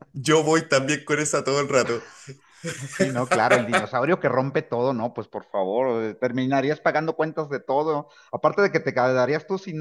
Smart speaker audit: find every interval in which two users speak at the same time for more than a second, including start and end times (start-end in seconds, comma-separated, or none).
none